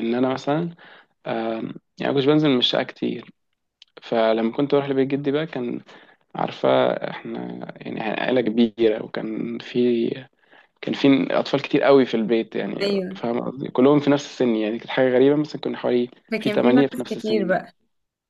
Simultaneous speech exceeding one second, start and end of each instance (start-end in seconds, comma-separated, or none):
16.3-17.6